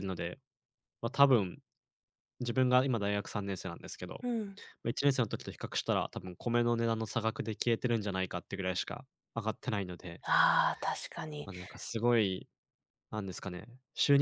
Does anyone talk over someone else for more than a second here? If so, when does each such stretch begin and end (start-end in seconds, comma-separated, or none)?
none